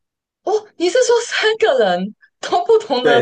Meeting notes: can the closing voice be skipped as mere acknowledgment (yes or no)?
no